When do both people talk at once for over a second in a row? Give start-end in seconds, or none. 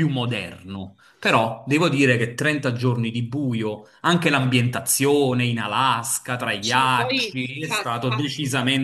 6.6-8.3